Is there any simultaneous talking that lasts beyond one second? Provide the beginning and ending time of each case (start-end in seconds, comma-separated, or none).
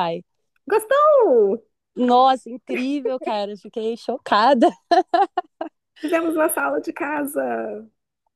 none